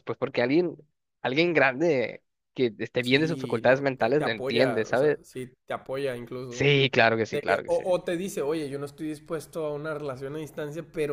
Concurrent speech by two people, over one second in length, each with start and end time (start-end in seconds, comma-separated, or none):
3.0-5.2